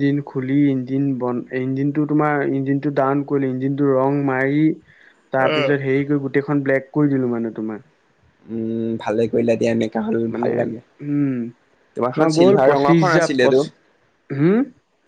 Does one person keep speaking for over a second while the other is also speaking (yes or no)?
yes